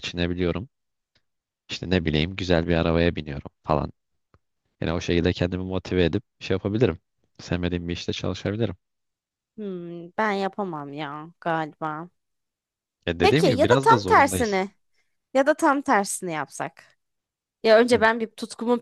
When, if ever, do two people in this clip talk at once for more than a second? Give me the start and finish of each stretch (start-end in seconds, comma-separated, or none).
13.2-14.7